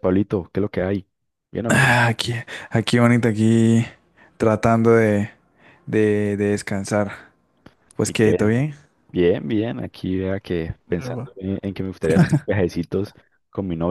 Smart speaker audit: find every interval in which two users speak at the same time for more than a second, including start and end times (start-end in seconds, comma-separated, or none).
none